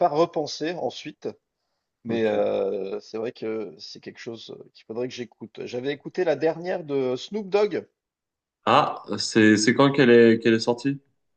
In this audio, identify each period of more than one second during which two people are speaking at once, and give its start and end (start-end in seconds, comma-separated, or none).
none